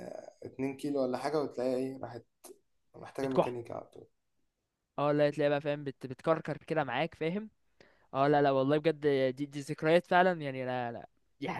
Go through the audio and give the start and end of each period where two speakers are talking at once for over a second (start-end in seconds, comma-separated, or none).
none